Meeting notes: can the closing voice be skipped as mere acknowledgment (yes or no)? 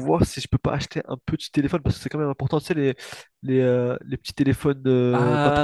no